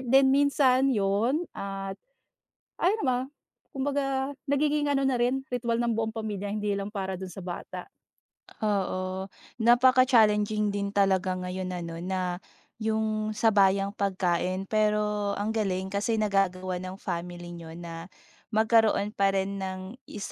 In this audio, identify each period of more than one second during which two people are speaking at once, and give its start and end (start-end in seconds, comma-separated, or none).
none